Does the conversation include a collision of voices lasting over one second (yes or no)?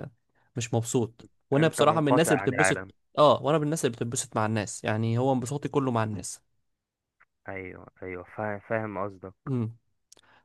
yes